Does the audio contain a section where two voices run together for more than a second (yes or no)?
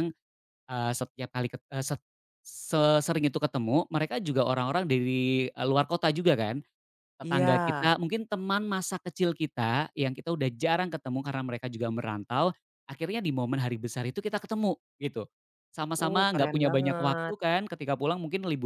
yes